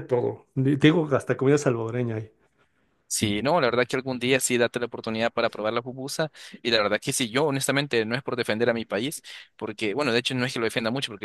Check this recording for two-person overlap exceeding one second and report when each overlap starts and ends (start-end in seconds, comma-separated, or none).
none